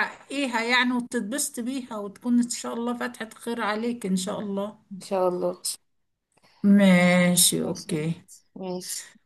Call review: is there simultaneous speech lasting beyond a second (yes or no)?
no